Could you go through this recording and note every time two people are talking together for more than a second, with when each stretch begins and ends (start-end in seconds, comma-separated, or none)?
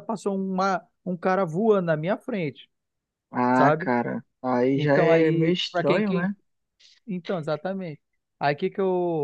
4.7-6.3